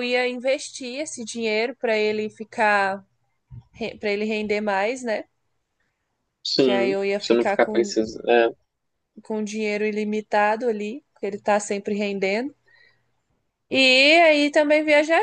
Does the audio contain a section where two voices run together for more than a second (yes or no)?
yes